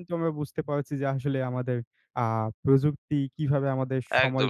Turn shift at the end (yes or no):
yes